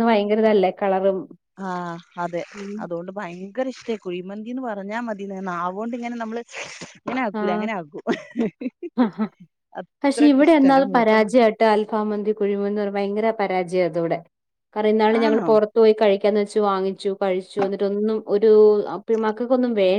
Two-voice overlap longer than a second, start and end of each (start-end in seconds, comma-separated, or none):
none